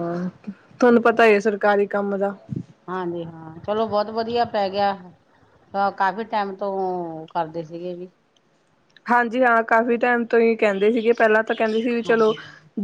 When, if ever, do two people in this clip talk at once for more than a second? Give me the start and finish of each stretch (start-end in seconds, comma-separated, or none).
none